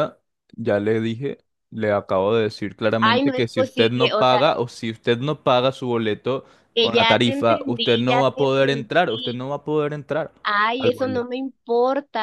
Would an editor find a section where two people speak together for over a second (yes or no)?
yes